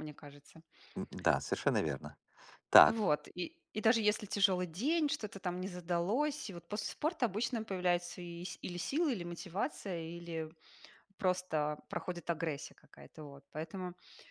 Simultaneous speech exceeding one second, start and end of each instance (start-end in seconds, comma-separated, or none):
none